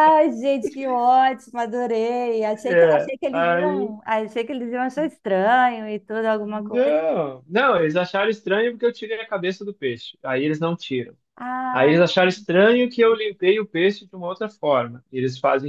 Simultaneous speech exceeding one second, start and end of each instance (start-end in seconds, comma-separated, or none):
2.5-4.0